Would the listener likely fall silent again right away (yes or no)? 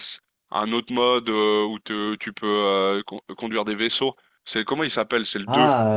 no